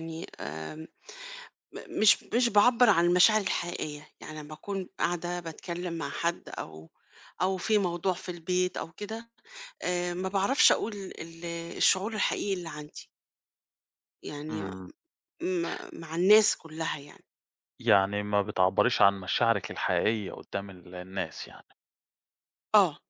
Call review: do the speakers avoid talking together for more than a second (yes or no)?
yes